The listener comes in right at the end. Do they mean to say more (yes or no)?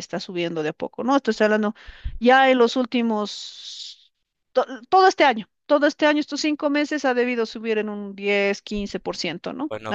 yes